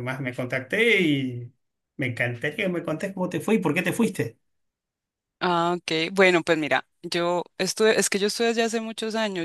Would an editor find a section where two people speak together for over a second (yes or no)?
no